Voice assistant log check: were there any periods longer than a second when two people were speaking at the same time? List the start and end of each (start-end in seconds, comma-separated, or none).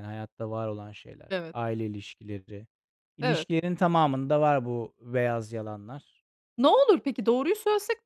none